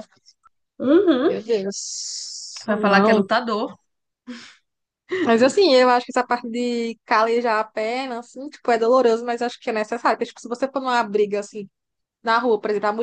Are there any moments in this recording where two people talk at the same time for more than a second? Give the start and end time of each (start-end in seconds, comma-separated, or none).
none